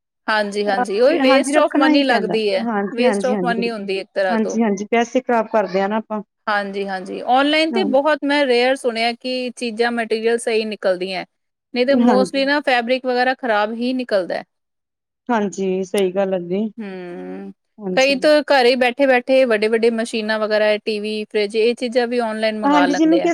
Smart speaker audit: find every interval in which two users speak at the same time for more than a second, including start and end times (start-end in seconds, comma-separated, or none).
1.2-3.5